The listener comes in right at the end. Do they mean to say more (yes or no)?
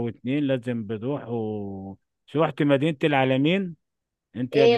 yes